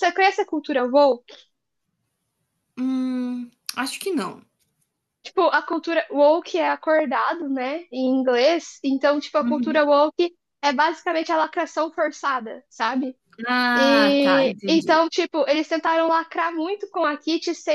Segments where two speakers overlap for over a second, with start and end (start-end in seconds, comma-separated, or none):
13.7-15.0